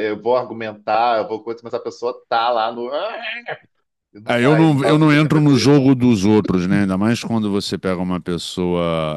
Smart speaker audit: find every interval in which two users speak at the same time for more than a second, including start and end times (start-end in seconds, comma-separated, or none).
4.3-5.7